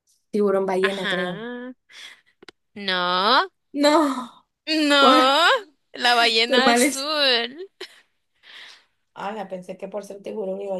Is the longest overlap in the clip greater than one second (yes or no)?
no